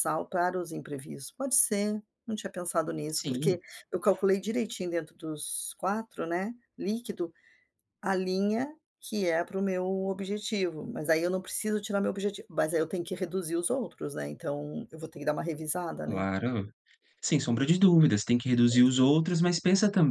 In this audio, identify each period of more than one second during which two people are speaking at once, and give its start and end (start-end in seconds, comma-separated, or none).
none